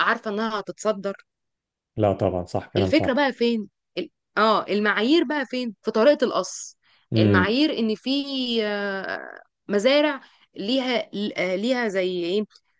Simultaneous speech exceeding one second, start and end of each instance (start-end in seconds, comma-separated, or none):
none